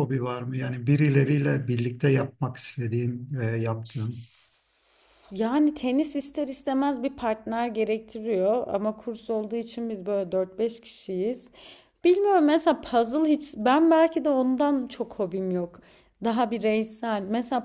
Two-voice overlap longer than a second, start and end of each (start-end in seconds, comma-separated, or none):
none